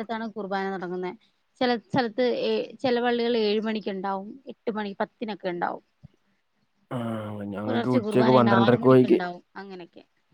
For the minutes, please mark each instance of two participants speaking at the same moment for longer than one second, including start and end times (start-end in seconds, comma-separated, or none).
7.6-9.2